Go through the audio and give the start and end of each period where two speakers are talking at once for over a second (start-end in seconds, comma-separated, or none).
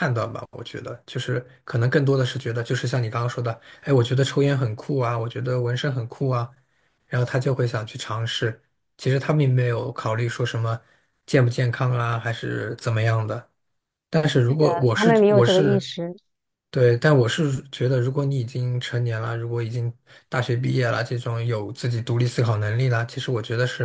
14.6-15.9